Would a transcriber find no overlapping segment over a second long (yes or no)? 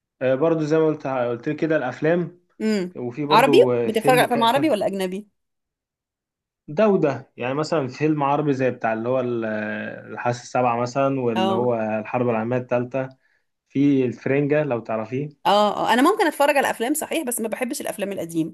no